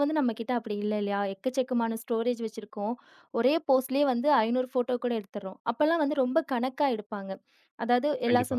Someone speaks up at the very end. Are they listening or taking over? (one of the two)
listening